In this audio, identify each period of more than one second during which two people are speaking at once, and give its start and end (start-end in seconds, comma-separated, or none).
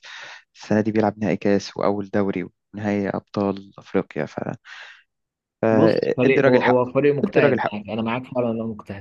5.7-7.8